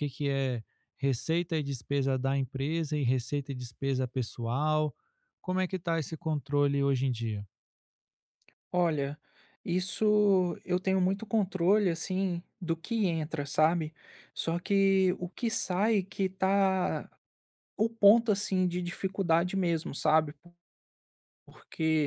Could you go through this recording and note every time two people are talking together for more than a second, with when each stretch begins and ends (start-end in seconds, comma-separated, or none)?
none